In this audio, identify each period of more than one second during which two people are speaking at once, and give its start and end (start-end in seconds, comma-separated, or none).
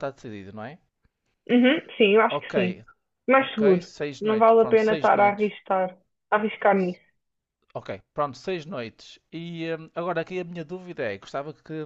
3.4-5.5